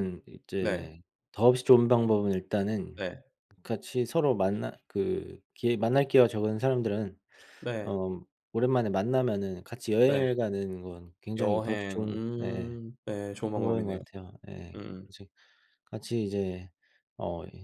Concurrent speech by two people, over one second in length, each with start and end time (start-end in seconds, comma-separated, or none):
11.4-12.8